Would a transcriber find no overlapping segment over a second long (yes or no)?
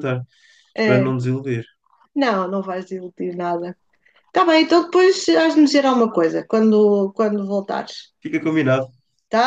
yes